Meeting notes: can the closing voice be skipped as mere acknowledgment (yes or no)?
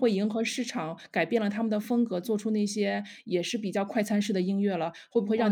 no